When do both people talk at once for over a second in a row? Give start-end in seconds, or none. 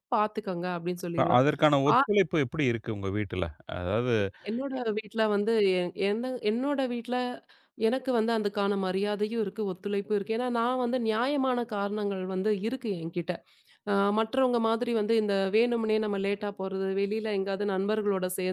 none